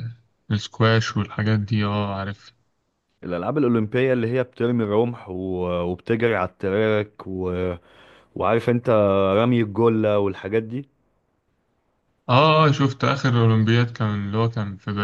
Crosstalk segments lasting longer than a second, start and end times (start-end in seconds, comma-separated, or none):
none